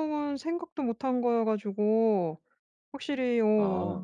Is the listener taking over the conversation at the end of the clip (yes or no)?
no